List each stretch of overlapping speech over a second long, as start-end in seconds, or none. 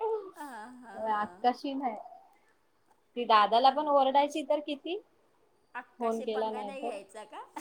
none